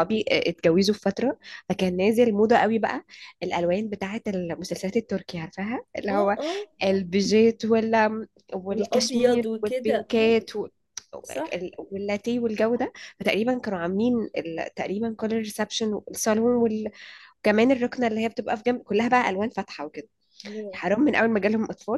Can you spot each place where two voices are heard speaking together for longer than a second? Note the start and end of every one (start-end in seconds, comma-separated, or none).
8.7-10.3